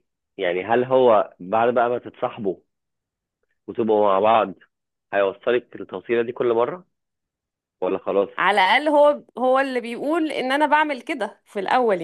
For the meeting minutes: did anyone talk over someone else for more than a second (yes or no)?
no